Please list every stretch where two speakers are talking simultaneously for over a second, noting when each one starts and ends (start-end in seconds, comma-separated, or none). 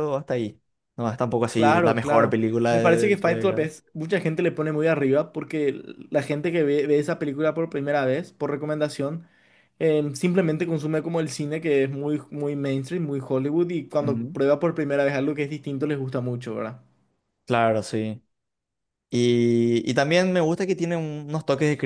1.5-3.7